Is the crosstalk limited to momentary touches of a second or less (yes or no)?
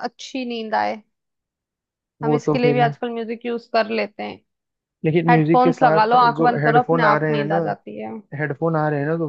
no